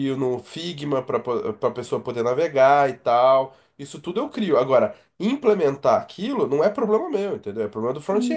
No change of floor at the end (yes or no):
no